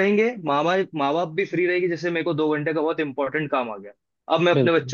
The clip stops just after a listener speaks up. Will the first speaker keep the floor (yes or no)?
yes